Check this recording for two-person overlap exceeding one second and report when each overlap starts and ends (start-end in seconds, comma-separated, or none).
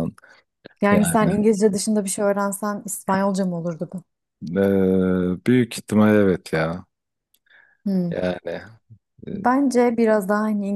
none